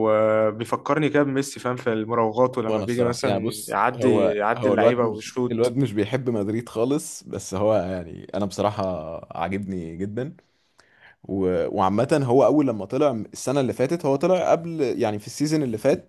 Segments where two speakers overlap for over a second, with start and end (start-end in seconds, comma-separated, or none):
2.7-5.8